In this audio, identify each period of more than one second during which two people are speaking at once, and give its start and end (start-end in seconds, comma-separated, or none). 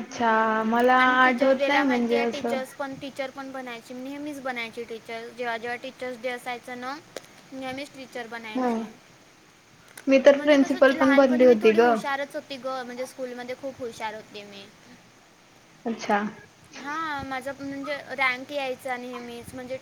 1.0-2.6, 10.3-11.8